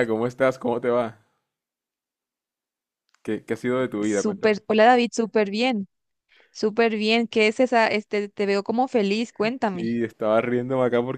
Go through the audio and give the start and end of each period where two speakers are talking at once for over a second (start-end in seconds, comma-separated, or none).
none